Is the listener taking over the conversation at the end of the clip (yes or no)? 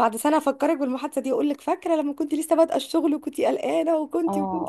yes